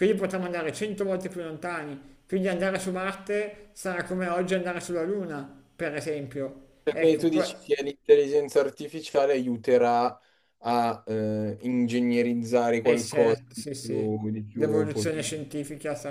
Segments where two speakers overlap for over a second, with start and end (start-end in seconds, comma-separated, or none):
12.8-15.5